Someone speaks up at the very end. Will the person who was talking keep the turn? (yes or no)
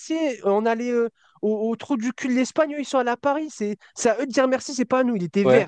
yes